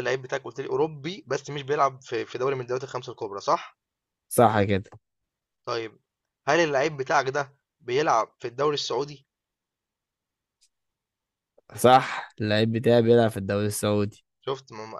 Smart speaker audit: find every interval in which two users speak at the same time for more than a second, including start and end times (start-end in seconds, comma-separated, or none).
none